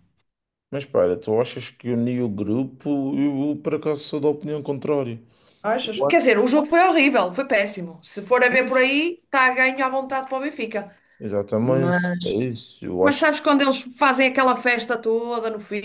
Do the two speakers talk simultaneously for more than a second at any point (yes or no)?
no